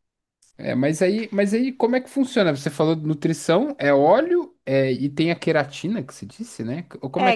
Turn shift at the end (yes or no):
yes